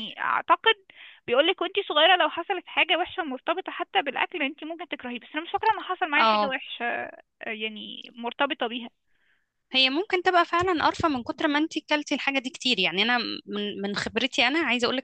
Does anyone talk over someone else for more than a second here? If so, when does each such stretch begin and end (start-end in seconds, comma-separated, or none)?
none